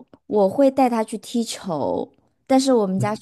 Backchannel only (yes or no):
yes